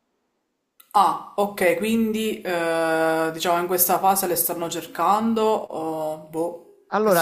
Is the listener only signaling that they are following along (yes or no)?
no